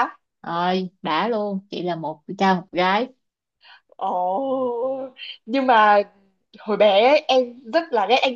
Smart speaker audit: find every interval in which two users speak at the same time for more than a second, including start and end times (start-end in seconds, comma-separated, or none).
none